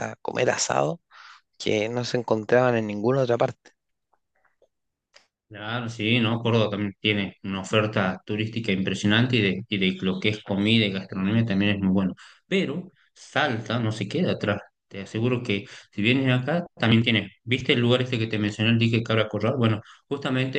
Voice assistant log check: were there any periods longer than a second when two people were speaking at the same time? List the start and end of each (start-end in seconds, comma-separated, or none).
none